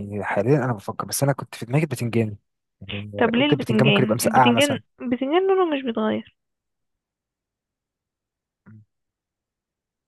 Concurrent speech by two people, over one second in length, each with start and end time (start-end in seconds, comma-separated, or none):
3.2-4.8